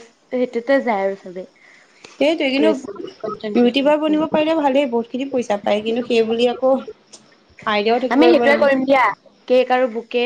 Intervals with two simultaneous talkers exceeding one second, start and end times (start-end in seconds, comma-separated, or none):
2.6-4.4